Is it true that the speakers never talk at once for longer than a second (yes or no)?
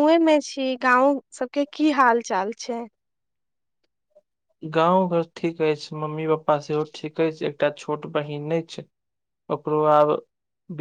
yes